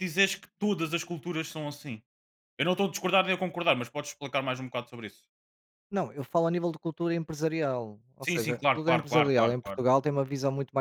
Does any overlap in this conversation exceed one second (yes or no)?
yes